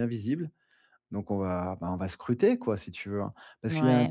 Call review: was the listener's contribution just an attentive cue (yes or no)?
no